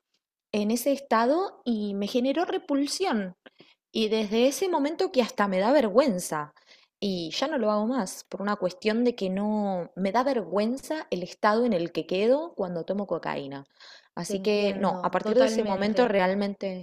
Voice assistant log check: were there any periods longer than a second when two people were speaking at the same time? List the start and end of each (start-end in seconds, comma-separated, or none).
14.2-16.1